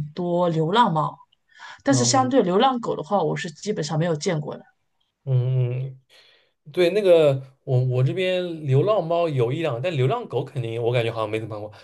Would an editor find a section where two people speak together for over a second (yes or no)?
no